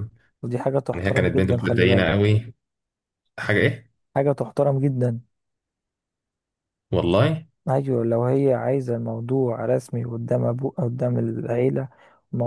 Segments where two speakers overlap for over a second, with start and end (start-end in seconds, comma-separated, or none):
0.9-2.1